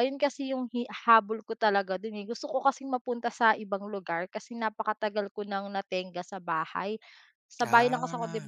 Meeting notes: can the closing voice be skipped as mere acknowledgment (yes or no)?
yes